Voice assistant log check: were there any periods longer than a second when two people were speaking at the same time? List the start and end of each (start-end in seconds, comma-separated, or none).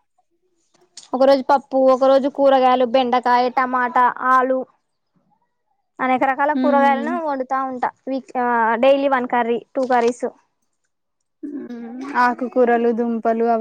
none